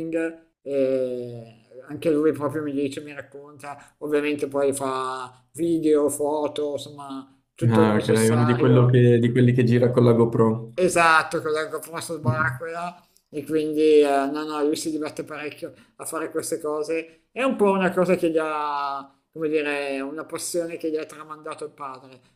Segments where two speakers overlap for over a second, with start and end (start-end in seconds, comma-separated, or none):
7.7-9.0